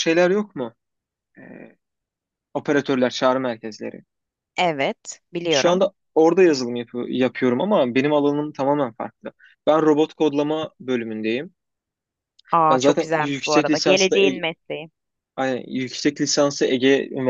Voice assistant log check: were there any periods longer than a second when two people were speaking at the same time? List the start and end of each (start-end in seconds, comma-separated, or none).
12.7-14.4